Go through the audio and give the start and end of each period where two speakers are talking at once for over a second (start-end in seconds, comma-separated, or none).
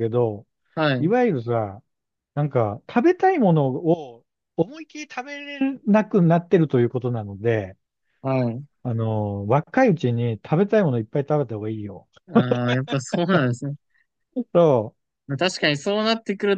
none